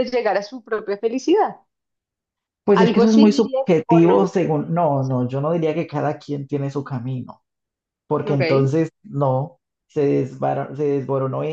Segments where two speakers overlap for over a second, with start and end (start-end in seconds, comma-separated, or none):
2.7-4.2